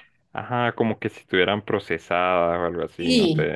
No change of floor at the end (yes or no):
no